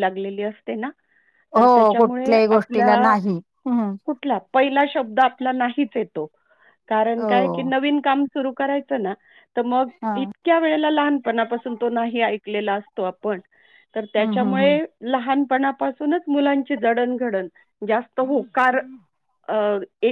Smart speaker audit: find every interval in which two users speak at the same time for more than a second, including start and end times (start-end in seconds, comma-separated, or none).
1.6-3.1